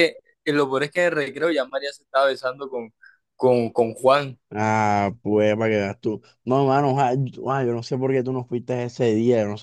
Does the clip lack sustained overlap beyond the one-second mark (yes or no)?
yes